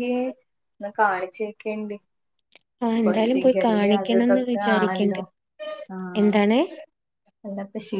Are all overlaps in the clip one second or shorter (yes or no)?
no